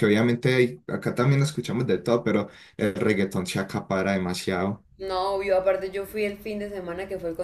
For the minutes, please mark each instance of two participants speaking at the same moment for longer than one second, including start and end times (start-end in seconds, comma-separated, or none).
none